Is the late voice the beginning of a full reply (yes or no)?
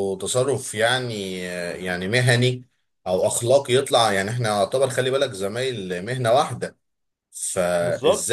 no